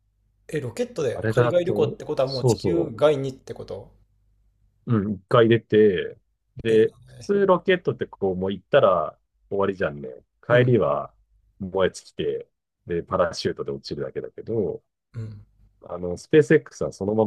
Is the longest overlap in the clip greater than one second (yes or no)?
yes